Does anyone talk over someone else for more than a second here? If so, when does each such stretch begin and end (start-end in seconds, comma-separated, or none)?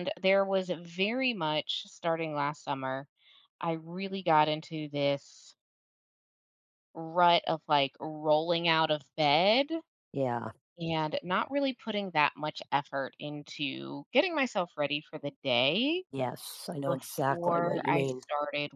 16.9-18.2